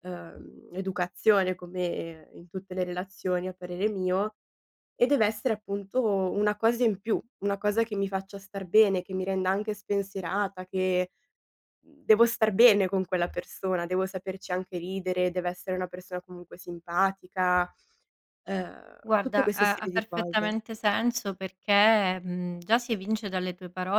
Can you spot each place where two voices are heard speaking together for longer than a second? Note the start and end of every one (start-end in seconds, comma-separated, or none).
19.1-20.6